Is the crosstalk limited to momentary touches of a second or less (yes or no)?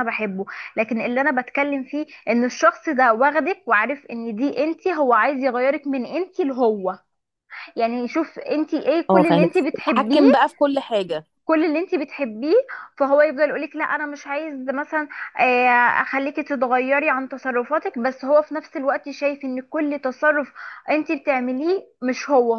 no